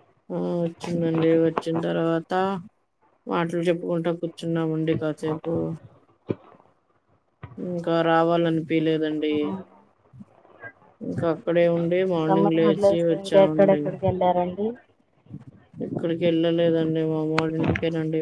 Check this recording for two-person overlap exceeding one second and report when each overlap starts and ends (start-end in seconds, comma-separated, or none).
12.2-13.8